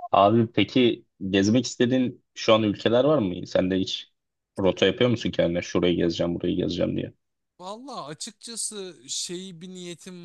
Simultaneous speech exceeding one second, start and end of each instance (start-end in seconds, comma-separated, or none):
none